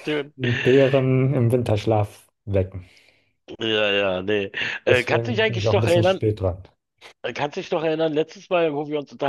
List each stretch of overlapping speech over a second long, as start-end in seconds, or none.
4.9-6.2